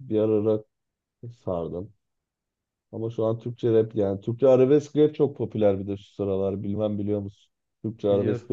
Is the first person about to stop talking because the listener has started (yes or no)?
yes